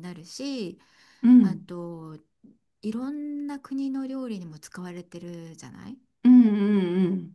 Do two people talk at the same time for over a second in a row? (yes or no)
no